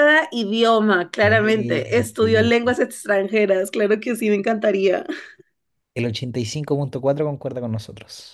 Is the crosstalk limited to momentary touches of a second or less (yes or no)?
no